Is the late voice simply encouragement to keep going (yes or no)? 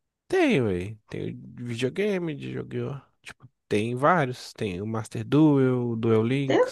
no